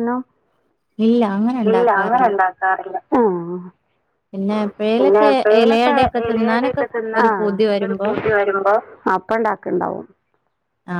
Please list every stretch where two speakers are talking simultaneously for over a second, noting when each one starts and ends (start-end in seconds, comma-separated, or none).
none